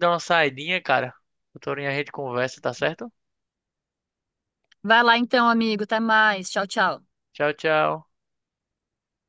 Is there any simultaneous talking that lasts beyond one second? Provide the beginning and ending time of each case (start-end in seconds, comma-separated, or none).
none